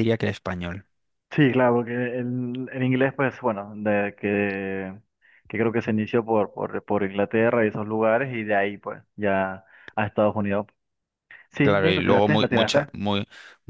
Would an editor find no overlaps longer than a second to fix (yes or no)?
no